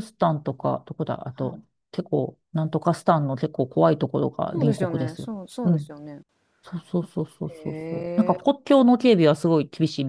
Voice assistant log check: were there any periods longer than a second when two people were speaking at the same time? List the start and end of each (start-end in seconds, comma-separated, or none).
4.5-5.9